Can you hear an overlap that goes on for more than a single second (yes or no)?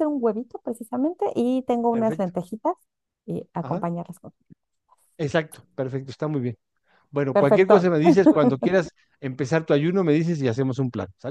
no